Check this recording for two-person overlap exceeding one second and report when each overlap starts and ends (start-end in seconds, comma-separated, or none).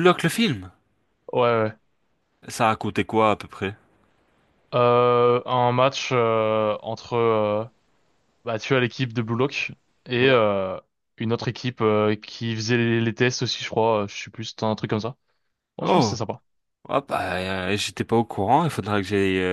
none